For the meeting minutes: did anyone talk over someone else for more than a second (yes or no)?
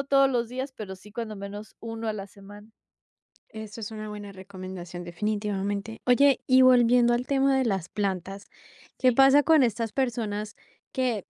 no